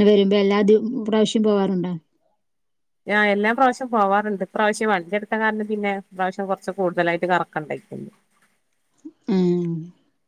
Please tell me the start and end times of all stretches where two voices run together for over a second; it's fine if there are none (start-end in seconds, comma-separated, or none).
none